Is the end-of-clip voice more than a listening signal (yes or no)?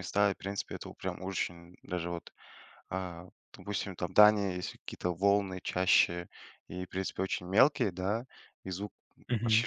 no